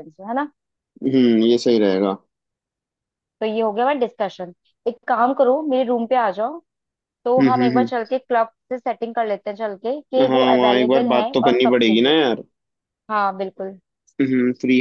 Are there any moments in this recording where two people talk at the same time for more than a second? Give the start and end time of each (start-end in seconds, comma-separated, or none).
10.3-12.1